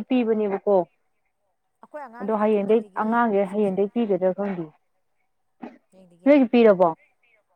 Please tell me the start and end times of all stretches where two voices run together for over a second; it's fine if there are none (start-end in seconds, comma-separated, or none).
2.2-3.8